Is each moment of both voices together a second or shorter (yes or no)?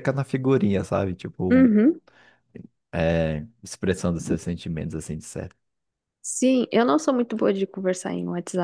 yes